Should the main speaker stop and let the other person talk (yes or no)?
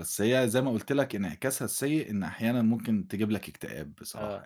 yes